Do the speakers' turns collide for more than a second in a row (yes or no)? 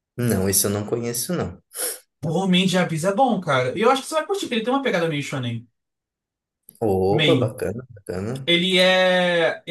no